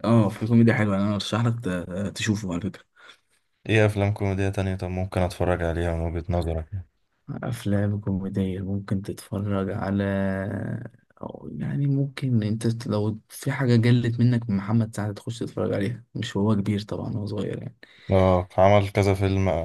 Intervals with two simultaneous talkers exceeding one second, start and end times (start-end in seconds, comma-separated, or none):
none